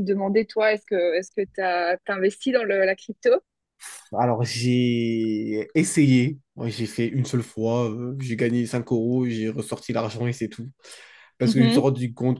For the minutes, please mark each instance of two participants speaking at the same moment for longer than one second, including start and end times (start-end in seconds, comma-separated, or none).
none